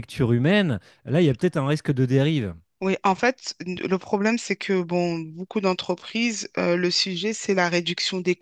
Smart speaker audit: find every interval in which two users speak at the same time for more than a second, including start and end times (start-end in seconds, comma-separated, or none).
none